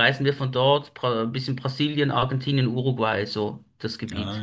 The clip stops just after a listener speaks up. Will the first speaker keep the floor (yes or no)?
no